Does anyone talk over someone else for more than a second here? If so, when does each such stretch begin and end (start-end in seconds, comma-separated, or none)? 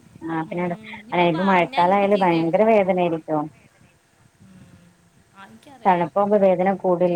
0.5-2.6